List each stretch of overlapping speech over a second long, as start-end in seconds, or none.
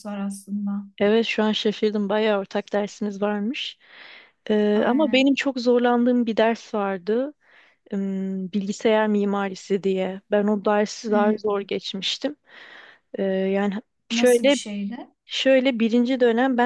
none